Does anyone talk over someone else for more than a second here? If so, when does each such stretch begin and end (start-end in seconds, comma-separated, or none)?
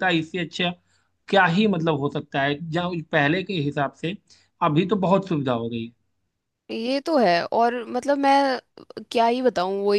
none